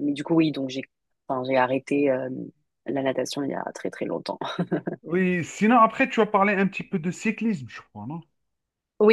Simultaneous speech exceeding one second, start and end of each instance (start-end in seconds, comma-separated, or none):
none